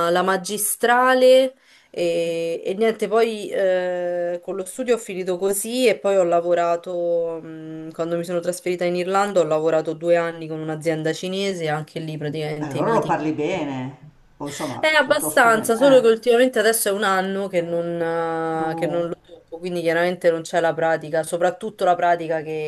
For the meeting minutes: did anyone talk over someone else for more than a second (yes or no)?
yes